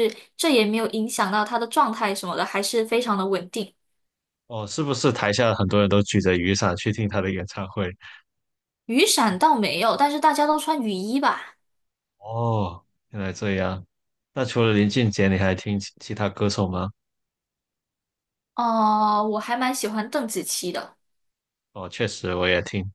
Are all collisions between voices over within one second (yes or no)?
yes